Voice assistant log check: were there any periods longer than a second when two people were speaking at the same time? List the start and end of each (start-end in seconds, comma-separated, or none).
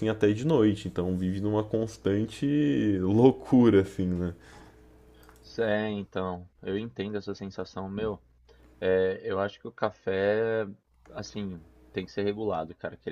none